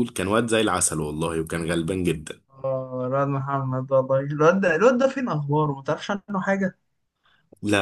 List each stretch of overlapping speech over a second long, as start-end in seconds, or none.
none